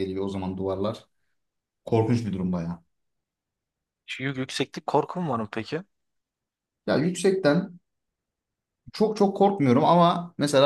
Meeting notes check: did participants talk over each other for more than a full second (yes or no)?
no